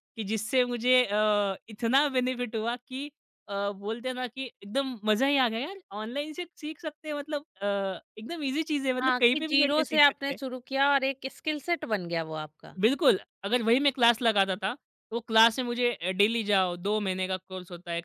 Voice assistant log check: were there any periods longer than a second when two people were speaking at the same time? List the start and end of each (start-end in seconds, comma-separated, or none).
9.0-10.4